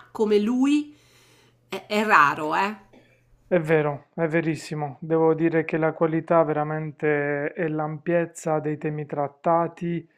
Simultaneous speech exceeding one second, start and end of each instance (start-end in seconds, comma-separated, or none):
none